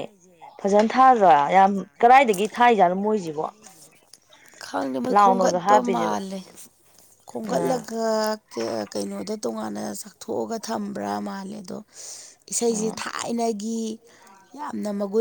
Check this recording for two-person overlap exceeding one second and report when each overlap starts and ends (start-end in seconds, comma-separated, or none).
none